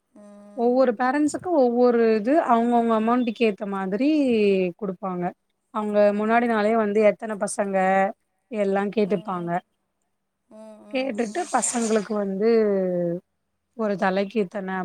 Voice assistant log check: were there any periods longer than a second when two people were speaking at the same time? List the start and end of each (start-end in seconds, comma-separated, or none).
none